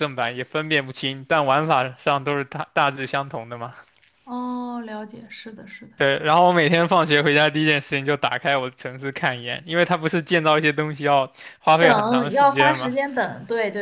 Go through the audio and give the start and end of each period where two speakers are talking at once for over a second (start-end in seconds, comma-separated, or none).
11.8-13.0